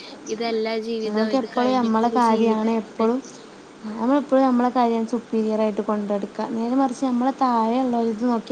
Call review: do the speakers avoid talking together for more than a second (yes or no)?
no